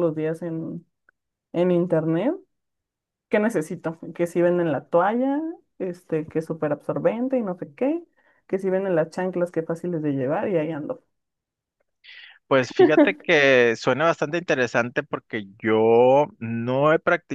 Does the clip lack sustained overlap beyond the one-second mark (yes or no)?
yes